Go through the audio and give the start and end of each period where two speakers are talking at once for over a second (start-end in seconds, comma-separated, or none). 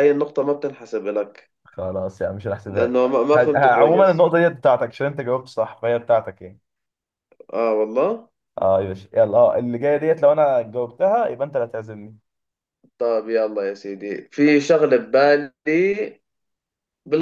2.7-4.2